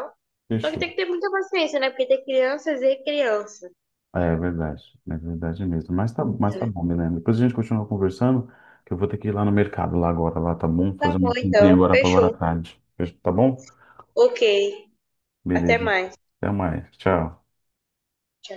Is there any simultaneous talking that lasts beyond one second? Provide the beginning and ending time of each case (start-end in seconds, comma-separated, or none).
11.0-12.3